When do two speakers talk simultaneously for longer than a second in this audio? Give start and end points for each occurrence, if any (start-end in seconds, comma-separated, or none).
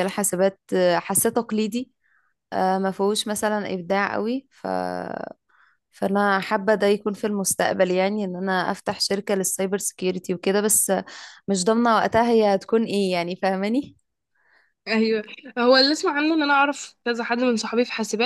none